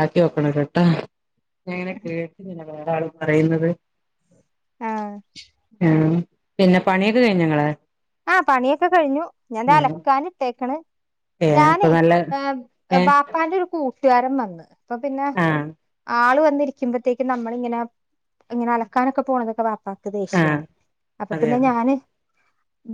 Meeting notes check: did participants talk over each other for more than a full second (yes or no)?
no